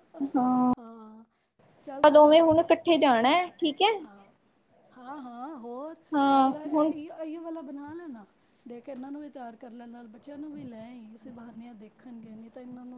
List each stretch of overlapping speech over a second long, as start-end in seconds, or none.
1.8-3.1